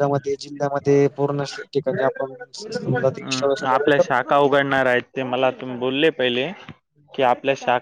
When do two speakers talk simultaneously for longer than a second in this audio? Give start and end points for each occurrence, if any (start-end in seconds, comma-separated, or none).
2.9-4.3